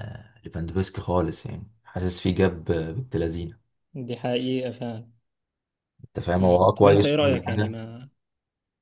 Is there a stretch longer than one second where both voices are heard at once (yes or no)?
yes